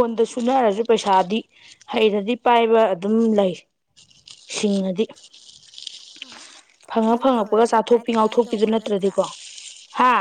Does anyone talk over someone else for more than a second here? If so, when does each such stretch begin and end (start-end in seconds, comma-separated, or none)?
7.1-9.1